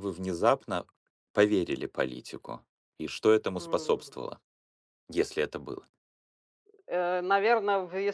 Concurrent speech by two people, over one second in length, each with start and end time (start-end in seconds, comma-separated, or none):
none